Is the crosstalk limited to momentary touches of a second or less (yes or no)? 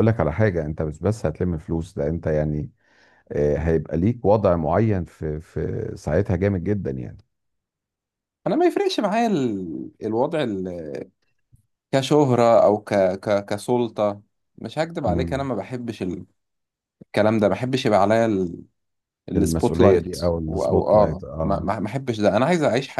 no